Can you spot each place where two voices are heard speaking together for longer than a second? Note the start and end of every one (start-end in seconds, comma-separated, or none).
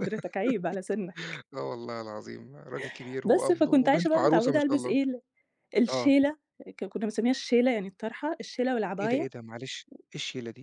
3.2-5.0